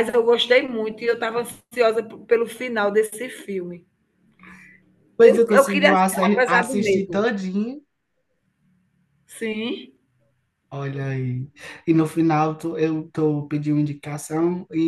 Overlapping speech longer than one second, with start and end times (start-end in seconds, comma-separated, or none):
5.2-7.2